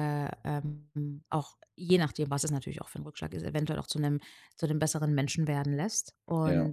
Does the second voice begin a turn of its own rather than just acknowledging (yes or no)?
no